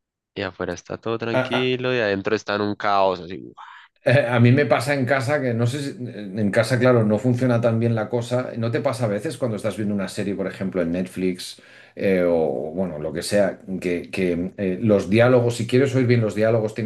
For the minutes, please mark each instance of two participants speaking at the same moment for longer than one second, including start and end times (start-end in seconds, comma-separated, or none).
none